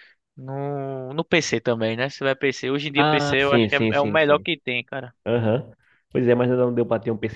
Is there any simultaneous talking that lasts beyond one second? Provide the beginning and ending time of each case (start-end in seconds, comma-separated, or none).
3.0-4.5